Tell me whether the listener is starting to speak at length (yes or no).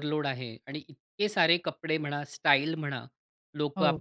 no